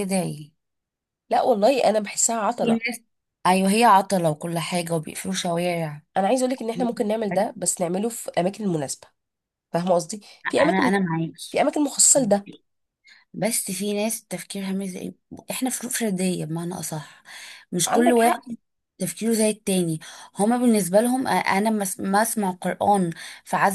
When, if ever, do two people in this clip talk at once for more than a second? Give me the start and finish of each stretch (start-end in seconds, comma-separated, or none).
none